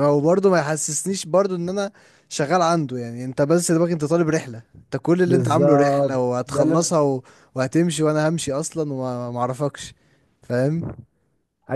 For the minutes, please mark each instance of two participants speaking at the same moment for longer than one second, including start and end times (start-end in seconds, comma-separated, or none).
5.2-7.0